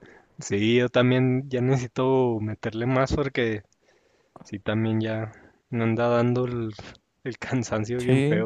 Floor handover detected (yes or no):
yes